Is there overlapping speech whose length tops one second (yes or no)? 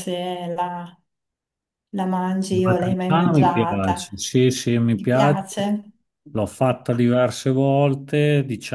yes